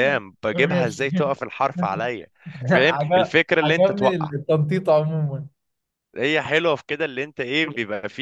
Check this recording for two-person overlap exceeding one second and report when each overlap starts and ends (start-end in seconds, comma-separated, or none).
2.7-4.3